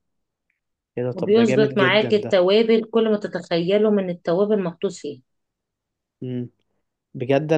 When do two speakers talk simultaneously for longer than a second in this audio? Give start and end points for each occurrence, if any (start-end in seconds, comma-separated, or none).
1.1-2.4